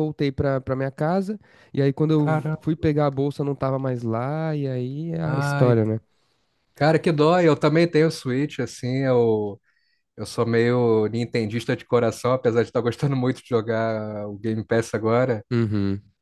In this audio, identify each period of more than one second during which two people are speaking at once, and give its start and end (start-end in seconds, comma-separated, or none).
none